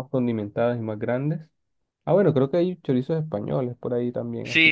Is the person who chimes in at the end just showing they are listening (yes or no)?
no